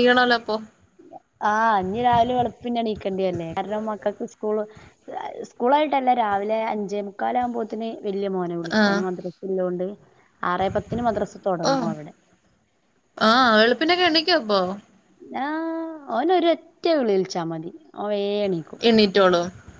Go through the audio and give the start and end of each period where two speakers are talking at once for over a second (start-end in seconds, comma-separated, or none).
none